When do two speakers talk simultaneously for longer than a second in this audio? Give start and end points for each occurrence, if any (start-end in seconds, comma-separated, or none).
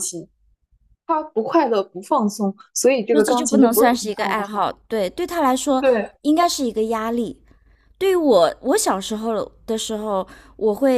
3.1-4.7